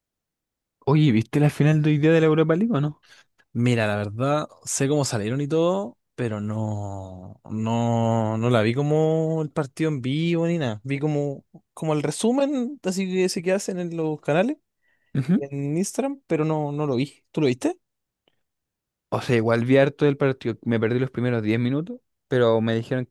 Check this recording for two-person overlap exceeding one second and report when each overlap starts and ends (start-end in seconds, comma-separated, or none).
none